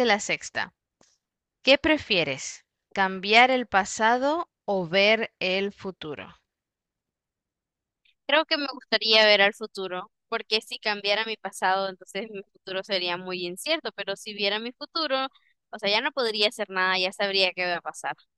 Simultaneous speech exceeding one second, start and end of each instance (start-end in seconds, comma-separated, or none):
none